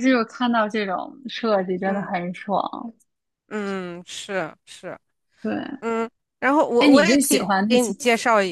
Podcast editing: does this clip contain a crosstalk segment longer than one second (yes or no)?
yes